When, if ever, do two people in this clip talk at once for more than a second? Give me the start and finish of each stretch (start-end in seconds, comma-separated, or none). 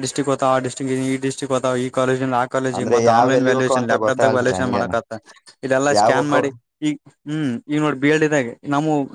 2.8-4.9